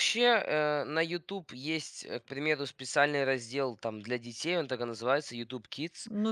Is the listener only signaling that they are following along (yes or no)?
no